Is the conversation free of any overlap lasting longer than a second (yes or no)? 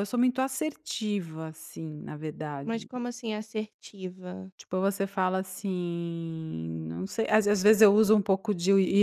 yes